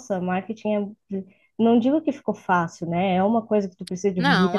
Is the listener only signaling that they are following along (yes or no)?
yes